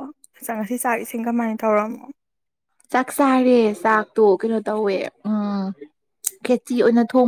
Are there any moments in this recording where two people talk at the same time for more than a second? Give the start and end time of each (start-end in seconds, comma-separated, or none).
none